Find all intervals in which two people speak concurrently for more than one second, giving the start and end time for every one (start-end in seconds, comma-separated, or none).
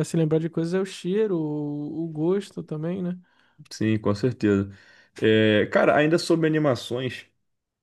none